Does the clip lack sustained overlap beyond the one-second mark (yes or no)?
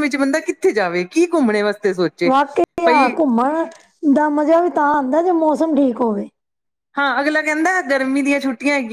yes